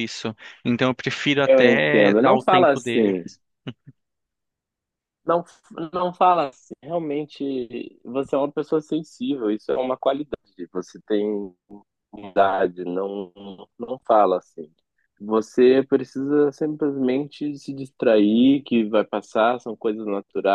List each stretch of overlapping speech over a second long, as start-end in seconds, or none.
1.4-3.2